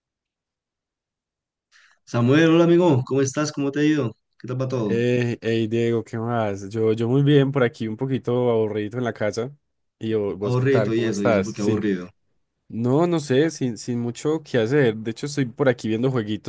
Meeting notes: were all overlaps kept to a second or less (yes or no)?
no